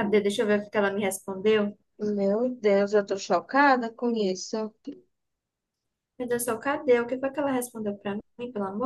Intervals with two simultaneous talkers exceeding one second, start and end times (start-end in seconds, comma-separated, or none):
none